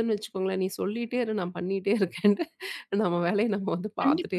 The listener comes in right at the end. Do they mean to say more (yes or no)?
yes